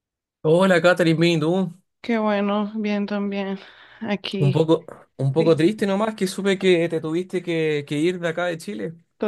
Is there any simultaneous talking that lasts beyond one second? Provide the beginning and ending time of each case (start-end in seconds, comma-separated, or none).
none